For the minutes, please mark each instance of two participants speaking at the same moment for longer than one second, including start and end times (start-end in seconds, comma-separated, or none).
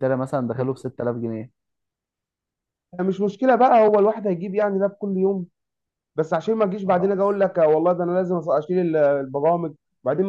none